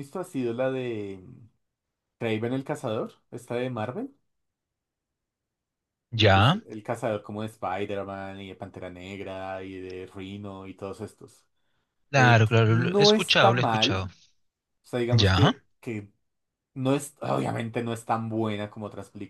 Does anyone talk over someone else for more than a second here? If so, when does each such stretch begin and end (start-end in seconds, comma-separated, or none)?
12.1-14.1